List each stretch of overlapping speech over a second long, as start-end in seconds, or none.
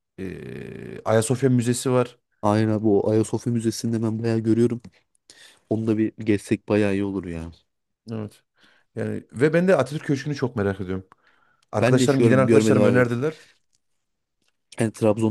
11.8-13.0